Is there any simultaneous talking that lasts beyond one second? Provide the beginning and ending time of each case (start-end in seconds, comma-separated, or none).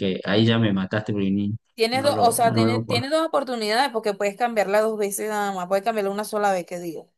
1.9-3.1